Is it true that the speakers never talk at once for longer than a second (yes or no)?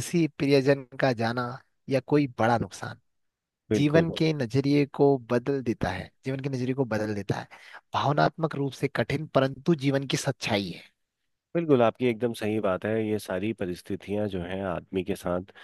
yes